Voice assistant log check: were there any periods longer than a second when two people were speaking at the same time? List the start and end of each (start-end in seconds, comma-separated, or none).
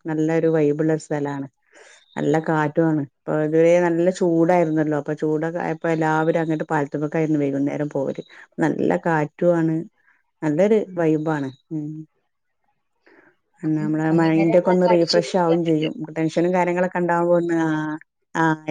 13.7-15.9